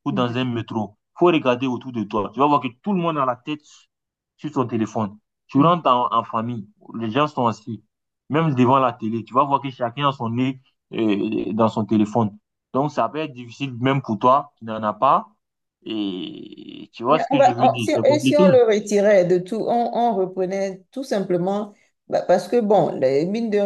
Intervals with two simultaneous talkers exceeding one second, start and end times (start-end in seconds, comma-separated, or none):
17.1-18.4